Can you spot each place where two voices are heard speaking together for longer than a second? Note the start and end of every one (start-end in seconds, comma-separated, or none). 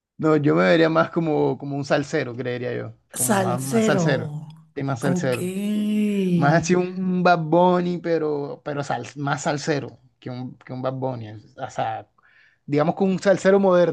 3.1-4.4